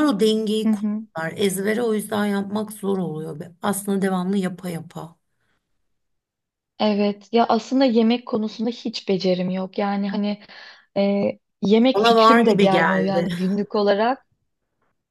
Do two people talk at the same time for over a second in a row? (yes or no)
yes